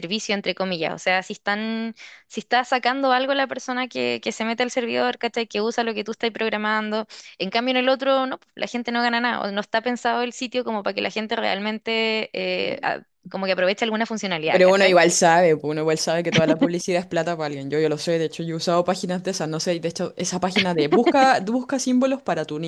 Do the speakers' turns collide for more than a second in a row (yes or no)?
no